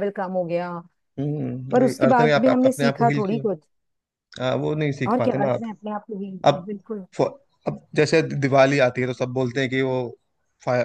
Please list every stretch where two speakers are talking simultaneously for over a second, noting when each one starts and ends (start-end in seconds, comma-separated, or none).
1.7-3.4